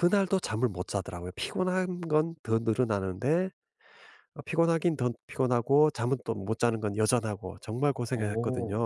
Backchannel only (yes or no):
yes